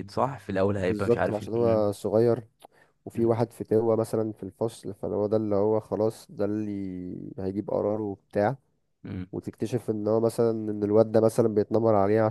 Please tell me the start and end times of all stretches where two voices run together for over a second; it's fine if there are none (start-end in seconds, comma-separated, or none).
0.7-1.9